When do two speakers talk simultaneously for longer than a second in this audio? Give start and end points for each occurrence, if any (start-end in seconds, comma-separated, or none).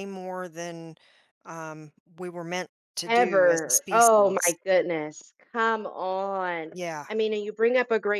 3.0-4.5